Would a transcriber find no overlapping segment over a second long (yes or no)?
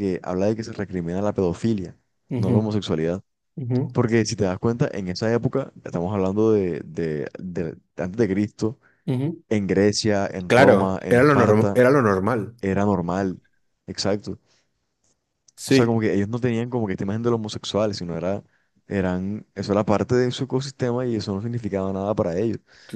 no